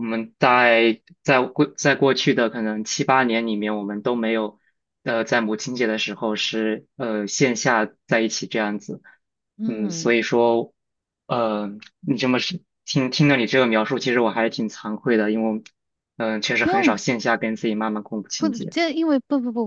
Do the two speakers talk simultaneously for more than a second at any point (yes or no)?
no